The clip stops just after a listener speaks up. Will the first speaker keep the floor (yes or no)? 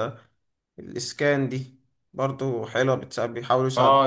no